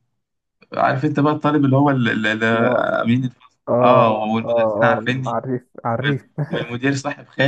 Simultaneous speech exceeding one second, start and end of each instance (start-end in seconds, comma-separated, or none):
3.7-5.4